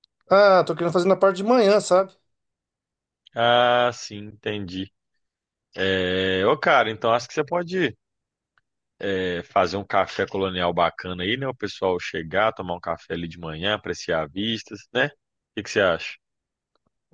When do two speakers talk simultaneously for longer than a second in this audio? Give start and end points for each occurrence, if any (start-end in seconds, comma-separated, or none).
none